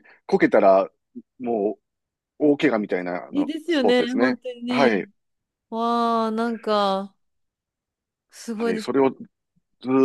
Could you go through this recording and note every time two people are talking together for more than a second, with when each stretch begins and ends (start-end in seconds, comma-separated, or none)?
3.3-5.1